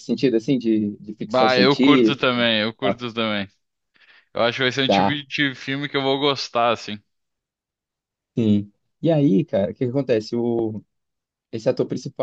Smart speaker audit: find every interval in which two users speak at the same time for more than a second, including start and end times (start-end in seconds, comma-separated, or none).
1.2-3.0